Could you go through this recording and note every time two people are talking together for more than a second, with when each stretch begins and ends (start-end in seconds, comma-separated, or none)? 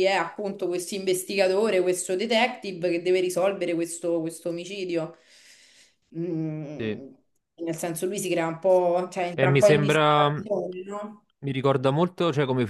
9.3-11.2